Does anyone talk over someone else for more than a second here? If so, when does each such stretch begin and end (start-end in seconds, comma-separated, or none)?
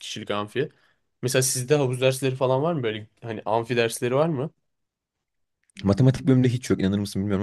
none